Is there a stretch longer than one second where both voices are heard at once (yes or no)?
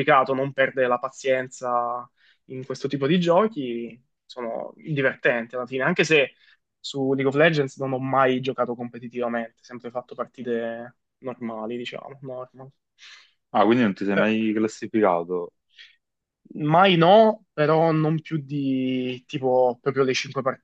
no